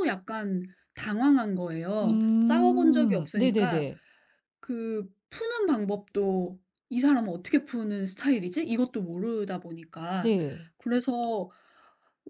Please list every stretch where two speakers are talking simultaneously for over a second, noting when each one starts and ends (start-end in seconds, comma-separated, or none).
2.0-3.9